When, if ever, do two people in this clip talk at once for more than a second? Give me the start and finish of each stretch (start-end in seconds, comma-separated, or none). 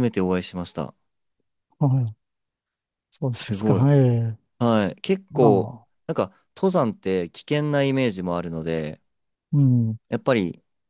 none